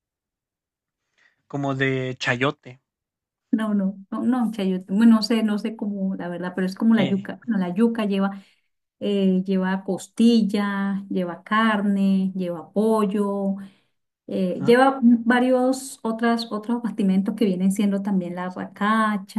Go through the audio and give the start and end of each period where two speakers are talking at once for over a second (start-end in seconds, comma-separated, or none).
none